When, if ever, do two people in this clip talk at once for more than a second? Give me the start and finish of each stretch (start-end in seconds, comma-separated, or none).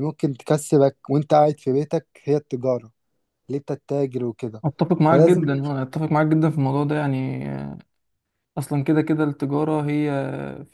none